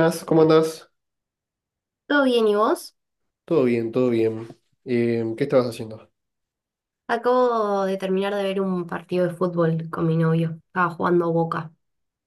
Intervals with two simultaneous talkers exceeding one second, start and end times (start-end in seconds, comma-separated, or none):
none